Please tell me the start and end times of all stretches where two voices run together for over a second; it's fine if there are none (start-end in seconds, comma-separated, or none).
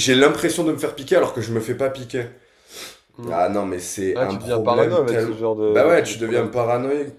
4.2-6.5